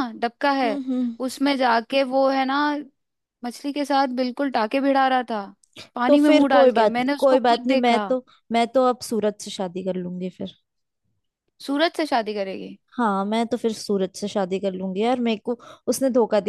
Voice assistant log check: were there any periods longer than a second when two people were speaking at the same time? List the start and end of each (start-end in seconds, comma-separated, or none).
6.1-8.1